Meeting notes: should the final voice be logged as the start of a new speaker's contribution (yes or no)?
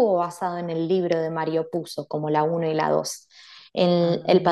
no